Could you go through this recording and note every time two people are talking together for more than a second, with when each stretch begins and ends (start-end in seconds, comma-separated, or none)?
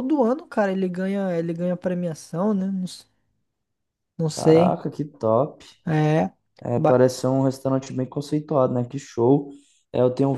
none